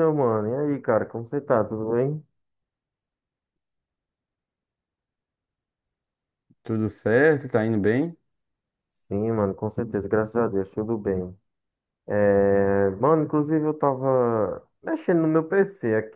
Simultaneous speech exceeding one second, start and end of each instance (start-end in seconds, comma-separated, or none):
none